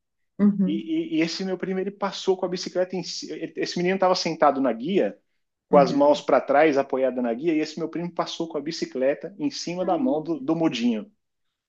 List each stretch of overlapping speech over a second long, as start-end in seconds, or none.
none